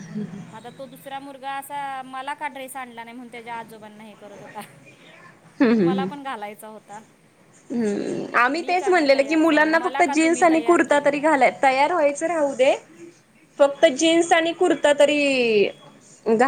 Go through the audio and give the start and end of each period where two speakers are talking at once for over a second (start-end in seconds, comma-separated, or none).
8.6-11.3